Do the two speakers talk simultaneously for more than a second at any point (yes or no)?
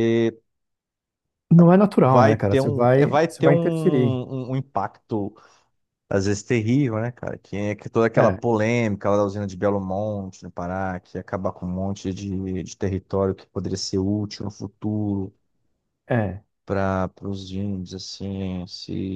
yes